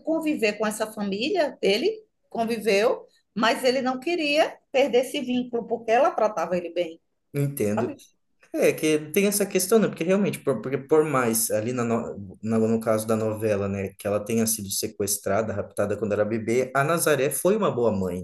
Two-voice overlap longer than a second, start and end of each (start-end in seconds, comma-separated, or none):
none